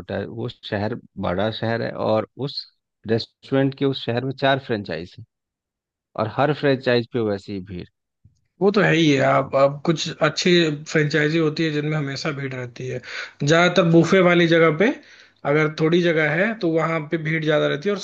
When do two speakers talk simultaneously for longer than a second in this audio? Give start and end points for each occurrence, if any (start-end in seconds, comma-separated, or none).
none